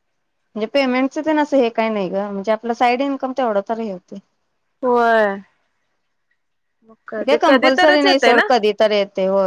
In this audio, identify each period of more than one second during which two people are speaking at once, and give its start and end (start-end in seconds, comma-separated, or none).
7.1-8.4